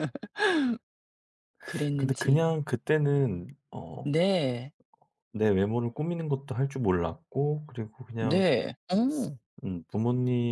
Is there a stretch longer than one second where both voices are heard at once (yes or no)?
no